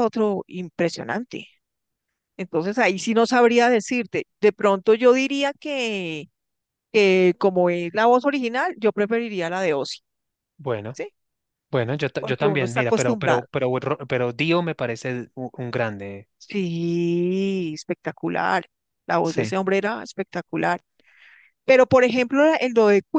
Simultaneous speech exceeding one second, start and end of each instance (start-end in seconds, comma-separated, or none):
12.2-13.5